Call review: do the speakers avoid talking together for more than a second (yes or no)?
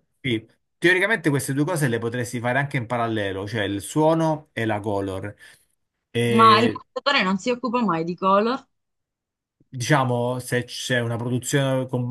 yes